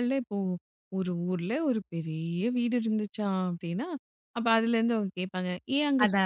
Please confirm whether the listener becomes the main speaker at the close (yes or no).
no